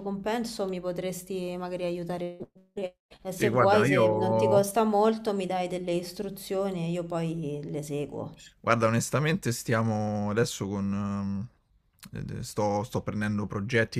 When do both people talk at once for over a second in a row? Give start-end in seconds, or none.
3.3-4.7